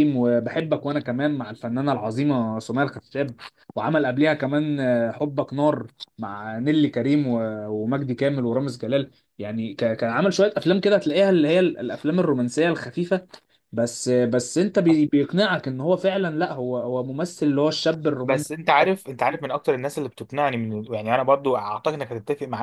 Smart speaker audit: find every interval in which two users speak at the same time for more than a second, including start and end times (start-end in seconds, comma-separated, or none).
none